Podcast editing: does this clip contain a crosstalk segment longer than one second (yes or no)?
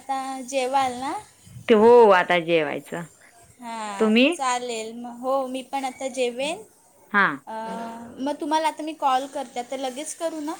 no